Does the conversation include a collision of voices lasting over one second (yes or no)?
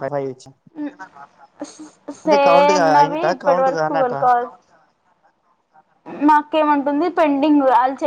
yes